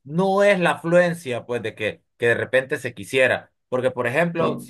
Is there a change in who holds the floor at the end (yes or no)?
no